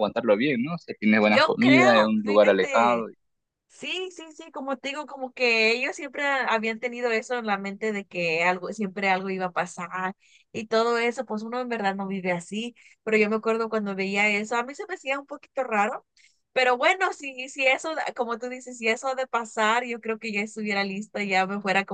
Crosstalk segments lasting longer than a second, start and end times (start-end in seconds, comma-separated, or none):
1.2-3.1